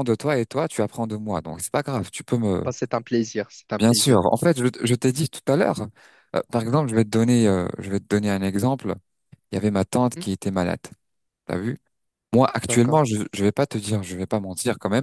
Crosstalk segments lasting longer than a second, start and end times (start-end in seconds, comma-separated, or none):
none